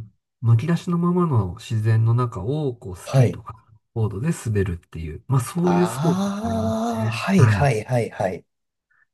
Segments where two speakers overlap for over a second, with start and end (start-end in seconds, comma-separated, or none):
5.6-7.7